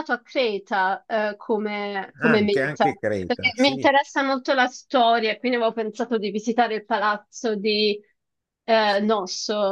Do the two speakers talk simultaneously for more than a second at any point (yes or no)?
yes